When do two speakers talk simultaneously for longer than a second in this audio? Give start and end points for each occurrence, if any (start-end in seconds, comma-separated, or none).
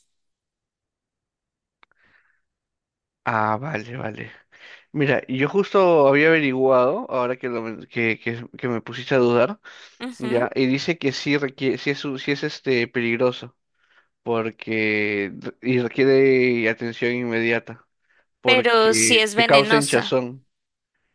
18.4-20.2